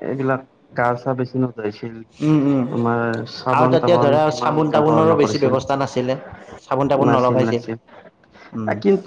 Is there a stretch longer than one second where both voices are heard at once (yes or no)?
yes